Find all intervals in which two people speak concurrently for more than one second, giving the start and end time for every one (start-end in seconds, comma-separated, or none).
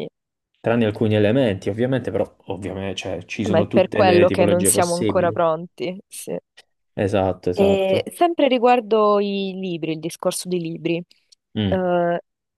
3.5-5.4